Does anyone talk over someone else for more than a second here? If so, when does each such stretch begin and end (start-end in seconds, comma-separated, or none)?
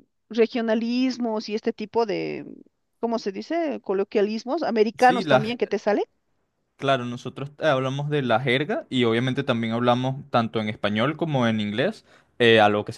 none